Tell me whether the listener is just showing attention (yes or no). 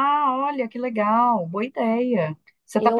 no